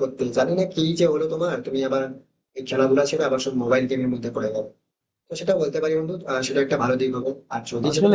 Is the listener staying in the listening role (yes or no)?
no